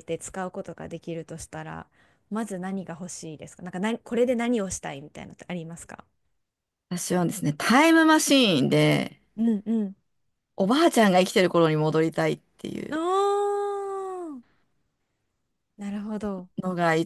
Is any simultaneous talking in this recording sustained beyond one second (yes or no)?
no